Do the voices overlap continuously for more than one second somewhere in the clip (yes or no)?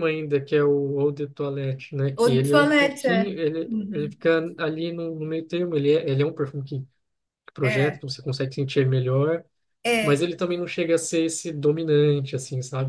yes